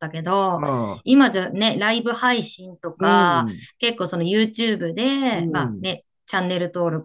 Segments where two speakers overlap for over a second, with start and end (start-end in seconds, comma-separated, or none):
none